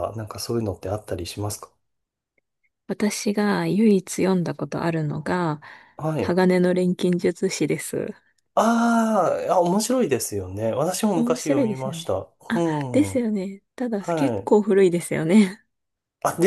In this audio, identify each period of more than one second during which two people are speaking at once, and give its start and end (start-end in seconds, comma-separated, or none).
11.1-13.1